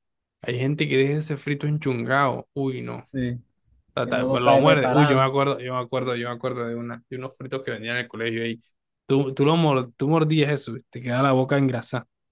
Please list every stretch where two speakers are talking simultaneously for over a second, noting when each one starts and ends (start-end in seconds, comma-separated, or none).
4.0-5.3